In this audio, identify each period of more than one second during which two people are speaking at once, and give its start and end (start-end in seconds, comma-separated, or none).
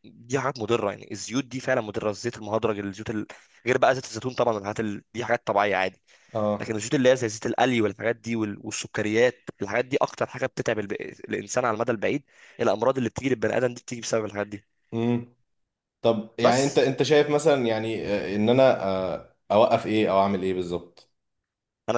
none